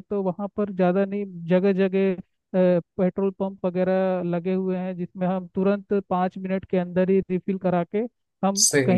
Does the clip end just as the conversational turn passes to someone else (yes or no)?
no